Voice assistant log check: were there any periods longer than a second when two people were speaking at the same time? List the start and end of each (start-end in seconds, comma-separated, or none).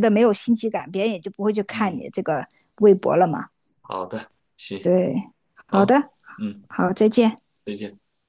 none